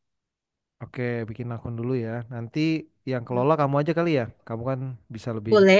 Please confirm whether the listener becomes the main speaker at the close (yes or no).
yes